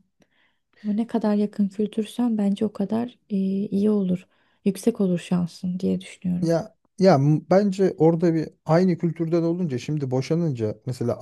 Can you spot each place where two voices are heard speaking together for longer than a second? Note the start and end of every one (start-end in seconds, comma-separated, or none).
none